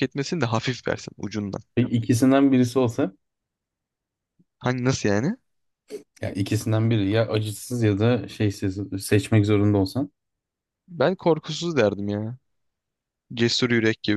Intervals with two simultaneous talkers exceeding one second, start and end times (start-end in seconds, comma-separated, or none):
none